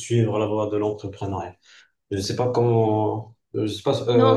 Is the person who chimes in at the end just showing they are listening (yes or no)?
yes